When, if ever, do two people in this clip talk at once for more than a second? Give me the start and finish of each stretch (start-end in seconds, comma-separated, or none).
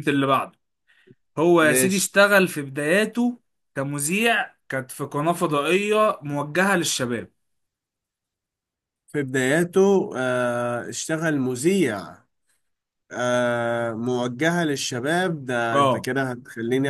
none